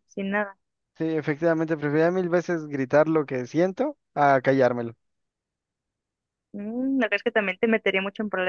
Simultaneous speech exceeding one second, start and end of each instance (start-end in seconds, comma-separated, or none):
none